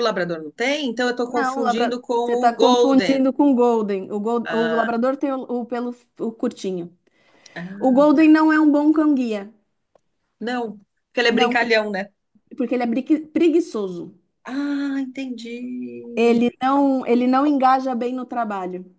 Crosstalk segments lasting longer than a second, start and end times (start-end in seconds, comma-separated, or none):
1.3-3.2